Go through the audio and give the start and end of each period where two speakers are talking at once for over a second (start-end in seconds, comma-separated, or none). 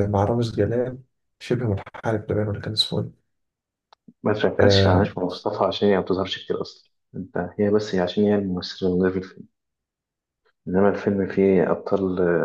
none